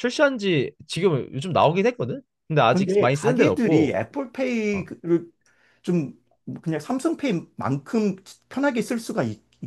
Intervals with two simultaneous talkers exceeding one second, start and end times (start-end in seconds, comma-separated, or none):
2.7-4.0